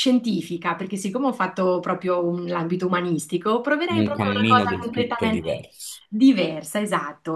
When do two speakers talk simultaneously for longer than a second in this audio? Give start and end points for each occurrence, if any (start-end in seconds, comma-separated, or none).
3.9-5.5